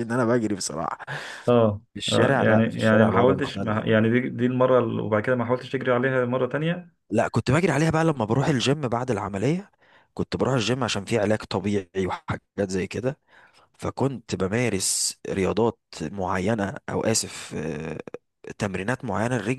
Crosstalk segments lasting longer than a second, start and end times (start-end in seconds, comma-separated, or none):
1.9-3.8